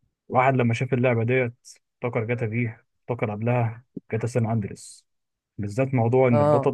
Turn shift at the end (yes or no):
no